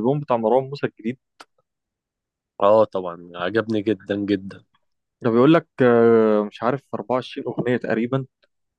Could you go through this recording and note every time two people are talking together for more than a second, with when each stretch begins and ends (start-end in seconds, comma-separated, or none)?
none